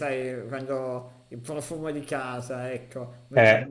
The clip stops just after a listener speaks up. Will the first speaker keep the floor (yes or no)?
yes